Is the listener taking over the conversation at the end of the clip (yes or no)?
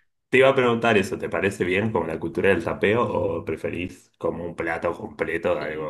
yes